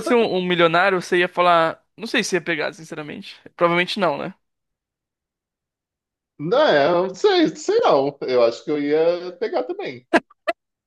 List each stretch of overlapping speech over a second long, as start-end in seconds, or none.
none